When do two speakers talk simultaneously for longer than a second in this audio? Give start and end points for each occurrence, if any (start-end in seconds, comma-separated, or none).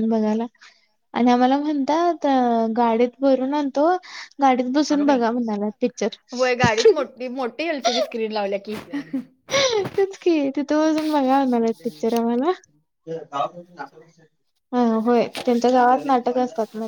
none